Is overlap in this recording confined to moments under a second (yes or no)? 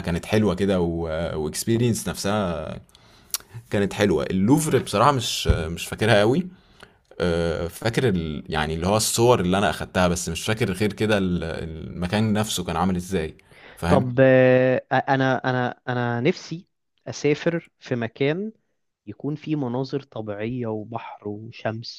yes